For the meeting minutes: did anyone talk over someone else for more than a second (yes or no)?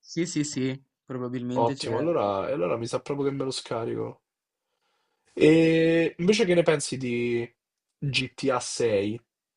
no